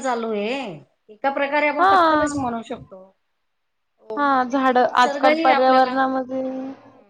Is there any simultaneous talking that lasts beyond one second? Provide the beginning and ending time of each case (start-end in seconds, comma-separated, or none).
4.2-5.9